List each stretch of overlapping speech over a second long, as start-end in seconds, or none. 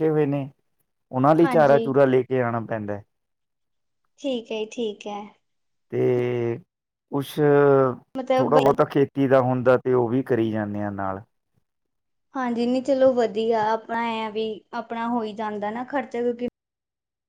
none